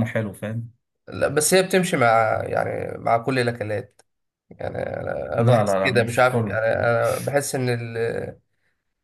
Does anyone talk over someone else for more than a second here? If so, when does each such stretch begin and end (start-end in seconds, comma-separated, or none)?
5.4-6.6